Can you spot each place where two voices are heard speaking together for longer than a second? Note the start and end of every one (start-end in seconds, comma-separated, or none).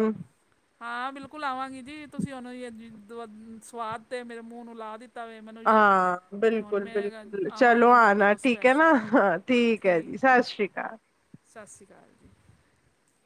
7.6-8.9